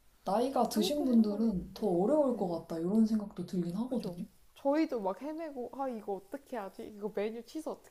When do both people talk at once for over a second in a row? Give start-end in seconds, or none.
0.5-2.5